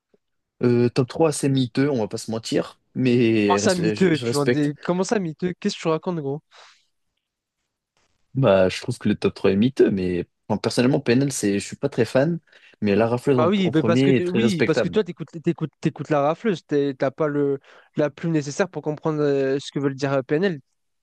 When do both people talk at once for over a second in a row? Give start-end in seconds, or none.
3.5-4.7, 13.3-15.0